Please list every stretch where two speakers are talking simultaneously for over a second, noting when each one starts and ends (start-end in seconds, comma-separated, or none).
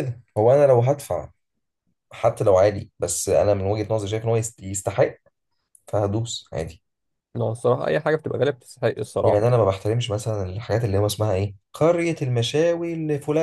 none